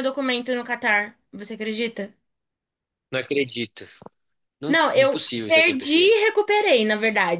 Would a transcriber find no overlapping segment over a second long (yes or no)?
no